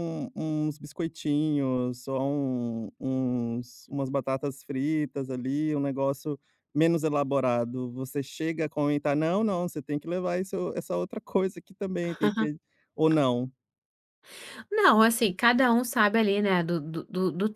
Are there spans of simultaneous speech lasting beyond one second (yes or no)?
no